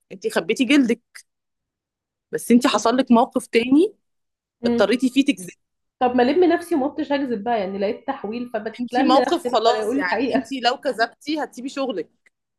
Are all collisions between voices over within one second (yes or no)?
no